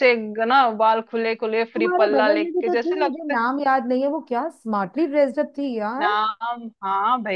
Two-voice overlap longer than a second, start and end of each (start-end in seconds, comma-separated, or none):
1.8-3.3